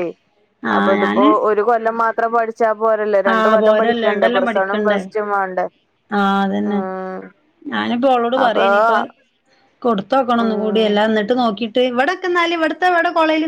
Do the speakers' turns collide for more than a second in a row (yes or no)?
yes